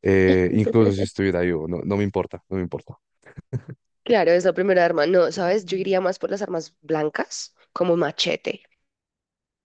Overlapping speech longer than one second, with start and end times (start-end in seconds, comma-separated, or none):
none